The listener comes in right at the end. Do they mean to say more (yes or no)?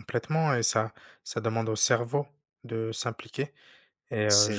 no